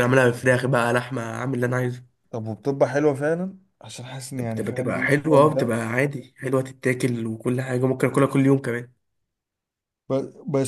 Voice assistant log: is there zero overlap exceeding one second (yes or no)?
no